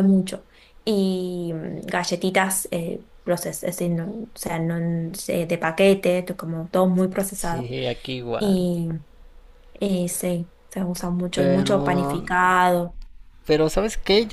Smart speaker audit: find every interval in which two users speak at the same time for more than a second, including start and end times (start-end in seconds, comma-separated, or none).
none